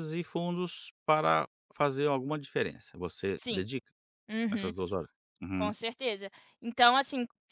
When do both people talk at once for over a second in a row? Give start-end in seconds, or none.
none